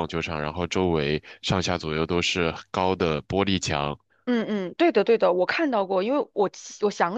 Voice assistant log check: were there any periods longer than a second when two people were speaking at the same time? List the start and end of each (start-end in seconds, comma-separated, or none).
none